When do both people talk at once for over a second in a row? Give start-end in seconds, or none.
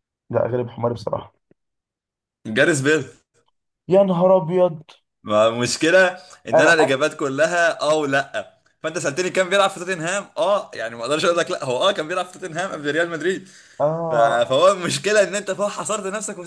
none